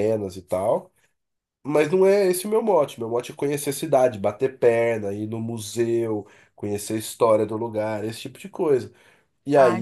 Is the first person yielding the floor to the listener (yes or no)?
yes